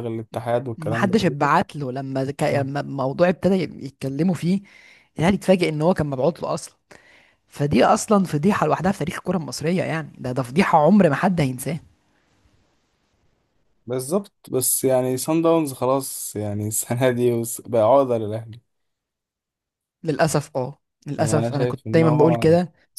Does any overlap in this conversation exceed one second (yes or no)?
yes